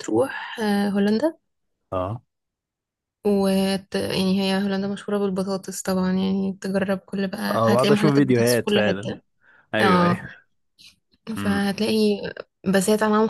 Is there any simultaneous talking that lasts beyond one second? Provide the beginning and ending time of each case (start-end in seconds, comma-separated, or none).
7.5-9.1